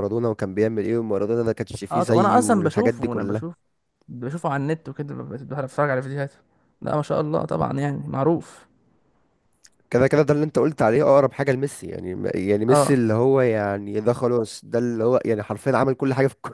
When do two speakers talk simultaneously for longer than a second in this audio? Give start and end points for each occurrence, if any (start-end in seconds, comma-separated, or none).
1.9-3.5